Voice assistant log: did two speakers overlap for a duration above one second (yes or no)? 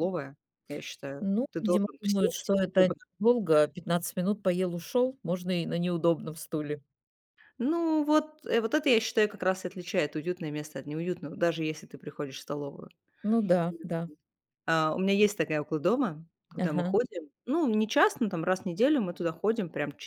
yes